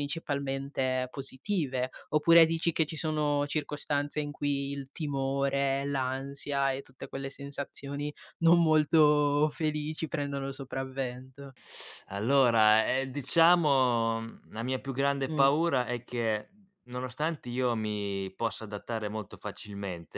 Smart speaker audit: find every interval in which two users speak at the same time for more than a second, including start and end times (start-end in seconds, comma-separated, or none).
none